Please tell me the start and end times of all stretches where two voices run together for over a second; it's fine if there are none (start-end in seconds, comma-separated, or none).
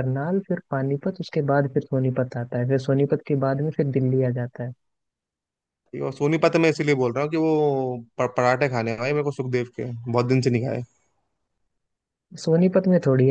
none